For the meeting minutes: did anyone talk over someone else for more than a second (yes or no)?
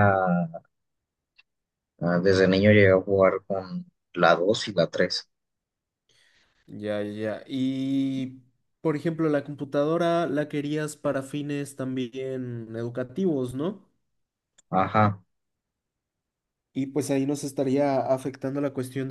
no